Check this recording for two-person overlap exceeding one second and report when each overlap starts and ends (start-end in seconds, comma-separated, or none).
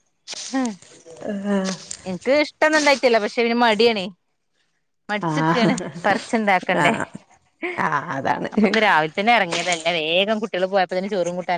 none